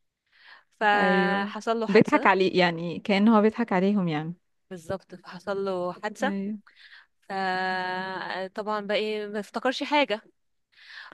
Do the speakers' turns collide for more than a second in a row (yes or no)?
yes